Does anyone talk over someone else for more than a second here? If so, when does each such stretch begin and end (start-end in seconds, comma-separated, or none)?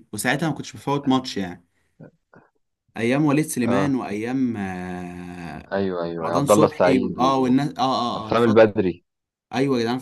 6.2-7.5